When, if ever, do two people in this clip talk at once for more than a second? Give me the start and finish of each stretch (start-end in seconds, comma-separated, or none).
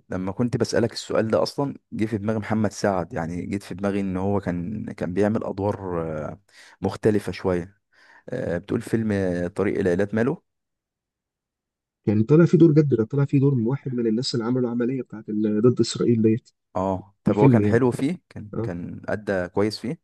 none